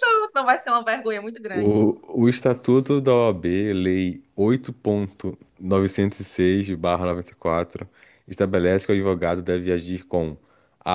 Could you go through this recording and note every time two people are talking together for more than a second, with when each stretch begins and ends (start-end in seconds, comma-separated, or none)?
none